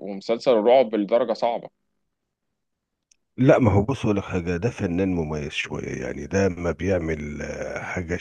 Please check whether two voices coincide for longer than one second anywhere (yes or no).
no